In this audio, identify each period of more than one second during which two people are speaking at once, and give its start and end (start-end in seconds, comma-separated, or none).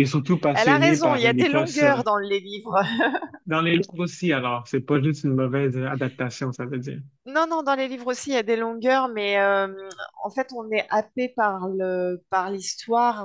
0.5-1.8